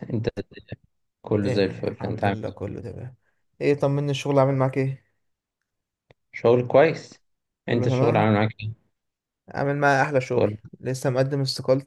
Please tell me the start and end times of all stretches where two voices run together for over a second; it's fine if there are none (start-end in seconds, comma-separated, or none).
1.4-2.7